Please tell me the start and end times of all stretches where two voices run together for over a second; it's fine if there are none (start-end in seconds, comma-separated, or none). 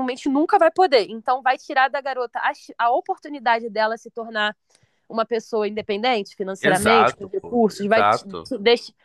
6.6-8.5